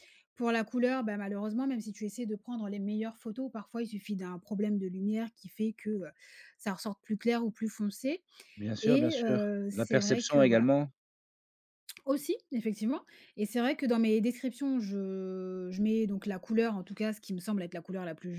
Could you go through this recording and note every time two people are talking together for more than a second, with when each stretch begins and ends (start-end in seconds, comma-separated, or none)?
8.8-10.7